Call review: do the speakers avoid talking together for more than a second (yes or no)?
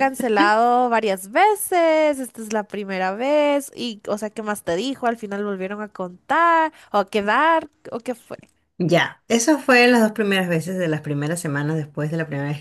yes